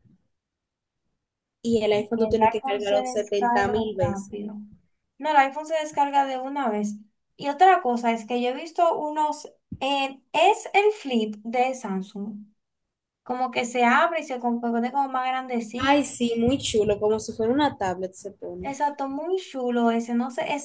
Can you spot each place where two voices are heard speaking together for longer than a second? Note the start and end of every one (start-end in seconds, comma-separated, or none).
2.1-4.3